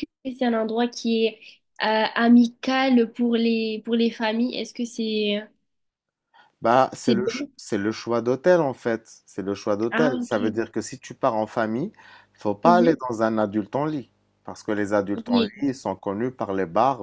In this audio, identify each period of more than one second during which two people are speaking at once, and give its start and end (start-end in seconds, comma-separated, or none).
none